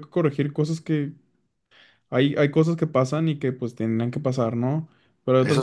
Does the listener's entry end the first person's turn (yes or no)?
no